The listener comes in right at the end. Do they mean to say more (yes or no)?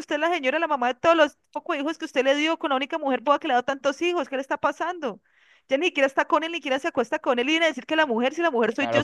yes